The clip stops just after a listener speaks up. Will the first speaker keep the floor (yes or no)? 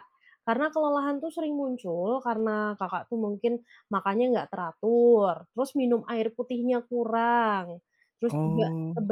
yes